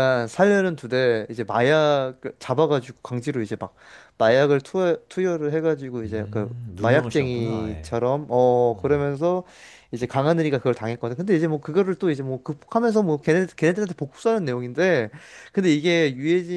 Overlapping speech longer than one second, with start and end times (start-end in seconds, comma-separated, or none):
6.0-8.0